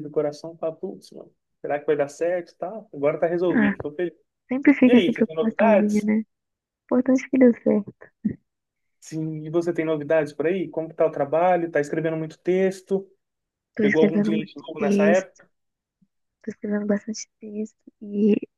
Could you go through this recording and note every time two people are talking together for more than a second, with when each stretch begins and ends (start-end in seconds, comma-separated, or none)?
4.9-6.1, 13.8-15.4